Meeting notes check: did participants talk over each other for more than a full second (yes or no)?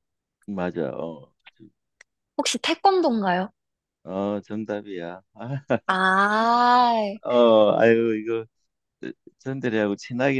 no